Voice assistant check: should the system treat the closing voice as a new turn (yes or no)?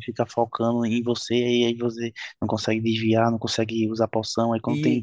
no